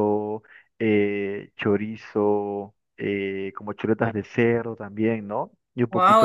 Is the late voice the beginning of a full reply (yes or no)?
yes